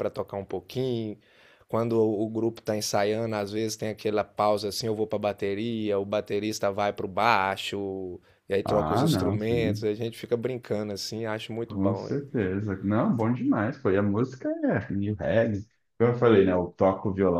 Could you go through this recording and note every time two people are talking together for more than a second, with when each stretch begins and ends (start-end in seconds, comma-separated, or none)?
8.6-9.9